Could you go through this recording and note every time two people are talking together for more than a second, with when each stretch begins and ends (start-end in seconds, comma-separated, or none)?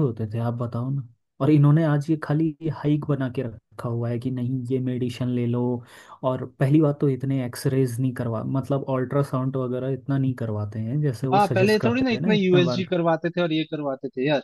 11.3-12.8